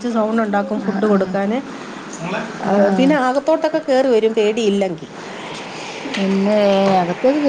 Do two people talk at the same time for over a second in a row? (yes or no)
no